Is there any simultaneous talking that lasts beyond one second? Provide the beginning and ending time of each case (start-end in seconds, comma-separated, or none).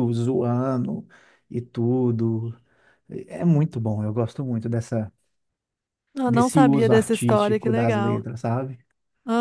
6.2-8.2